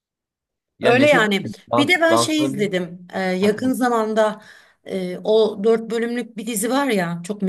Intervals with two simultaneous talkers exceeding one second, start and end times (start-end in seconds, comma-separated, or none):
0.8-2.7